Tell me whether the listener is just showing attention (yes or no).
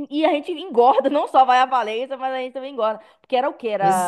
yes